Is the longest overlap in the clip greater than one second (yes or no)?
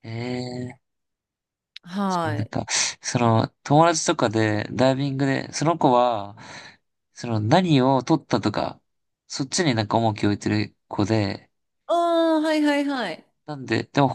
no